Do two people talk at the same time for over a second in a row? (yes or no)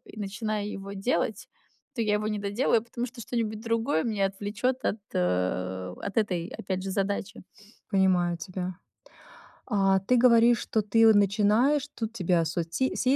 no